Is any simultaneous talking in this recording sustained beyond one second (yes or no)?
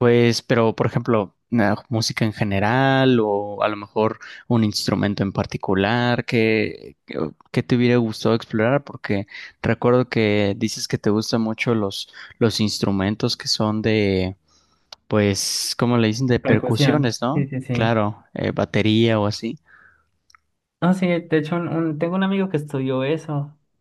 yes